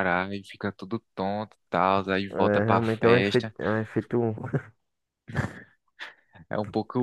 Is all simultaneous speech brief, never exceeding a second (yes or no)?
no